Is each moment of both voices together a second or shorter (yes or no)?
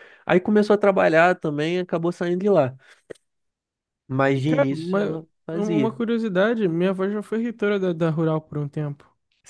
no